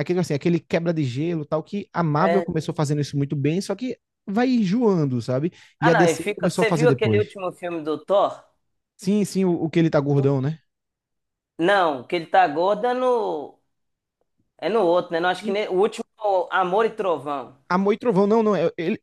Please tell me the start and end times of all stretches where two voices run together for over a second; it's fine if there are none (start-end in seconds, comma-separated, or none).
5.8-7.2